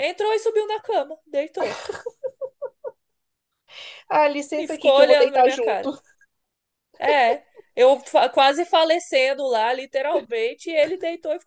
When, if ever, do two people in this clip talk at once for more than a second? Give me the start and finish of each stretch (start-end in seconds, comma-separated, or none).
4.5-5.9